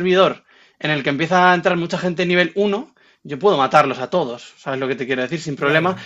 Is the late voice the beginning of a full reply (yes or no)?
no